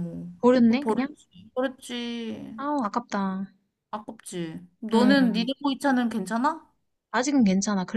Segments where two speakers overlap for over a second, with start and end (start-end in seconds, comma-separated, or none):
none